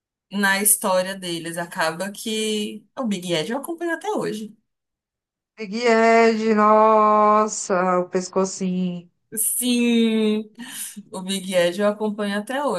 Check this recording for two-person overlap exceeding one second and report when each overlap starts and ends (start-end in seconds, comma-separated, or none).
none